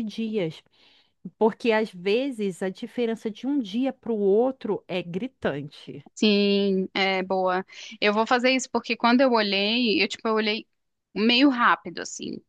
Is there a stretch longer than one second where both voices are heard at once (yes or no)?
no